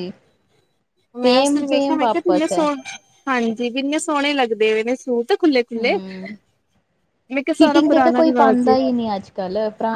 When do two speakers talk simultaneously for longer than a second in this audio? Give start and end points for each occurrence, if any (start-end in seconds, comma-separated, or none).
1.2-2.6